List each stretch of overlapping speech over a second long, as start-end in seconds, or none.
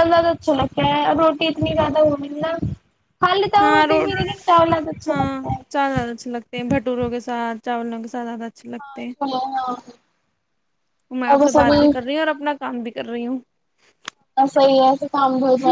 none